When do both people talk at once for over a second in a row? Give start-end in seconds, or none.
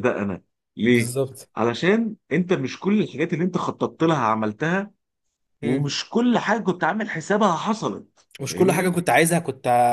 none